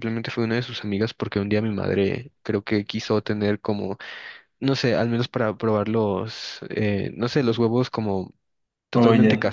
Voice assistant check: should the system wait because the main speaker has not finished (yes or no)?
yes